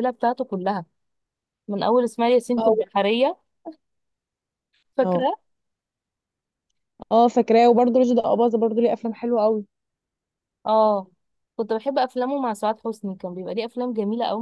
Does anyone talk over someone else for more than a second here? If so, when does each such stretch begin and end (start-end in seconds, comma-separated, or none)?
none